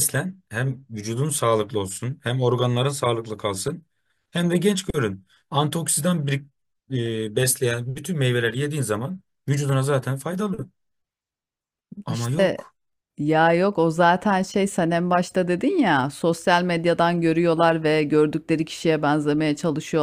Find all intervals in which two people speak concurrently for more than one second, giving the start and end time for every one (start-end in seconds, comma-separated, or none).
none